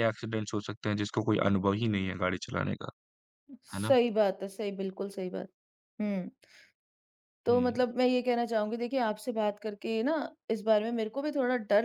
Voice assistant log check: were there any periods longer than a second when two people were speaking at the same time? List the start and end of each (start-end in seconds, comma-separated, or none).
none